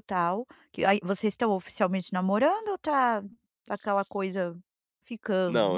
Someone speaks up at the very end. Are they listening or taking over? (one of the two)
taking over